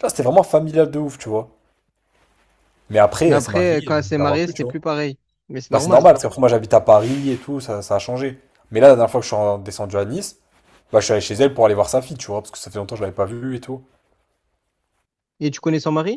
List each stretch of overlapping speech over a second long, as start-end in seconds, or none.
3.3-4.8